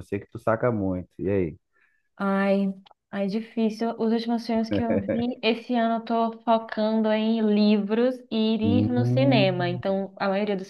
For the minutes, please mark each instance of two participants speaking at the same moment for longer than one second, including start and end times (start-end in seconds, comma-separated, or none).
8.6-10.0